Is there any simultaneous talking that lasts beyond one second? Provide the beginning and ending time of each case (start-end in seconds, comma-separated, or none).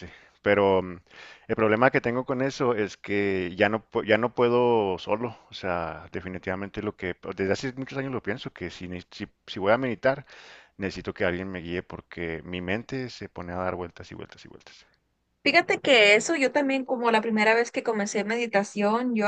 none